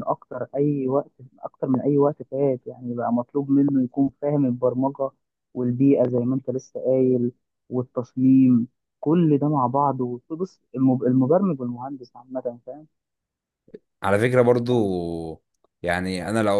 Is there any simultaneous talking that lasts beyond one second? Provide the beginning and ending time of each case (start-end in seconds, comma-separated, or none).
none